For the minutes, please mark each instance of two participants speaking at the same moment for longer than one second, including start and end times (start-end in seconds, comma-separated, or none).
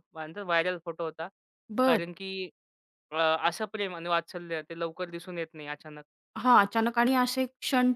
none